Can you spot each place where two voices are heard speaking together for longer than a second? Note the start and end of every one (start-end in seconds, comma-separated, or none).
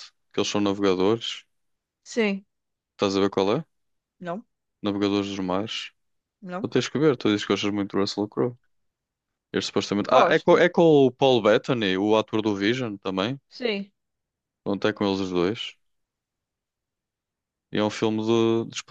none